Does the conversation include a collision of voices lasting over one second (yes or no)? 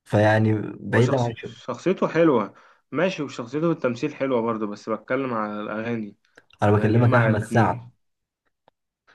yes